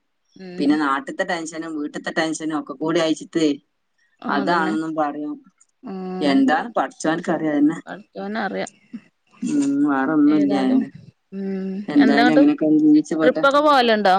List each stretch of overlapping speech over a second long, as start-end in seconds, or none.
none